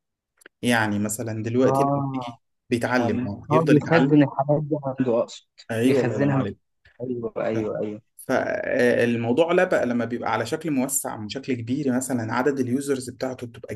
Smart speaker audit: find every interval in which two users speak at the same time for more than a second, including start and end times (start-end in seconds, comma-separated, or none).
3.0-4.2